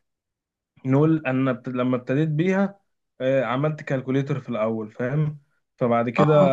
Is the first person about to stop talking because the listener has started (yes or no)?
no